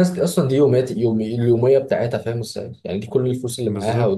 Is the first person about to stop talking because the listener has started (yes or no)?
no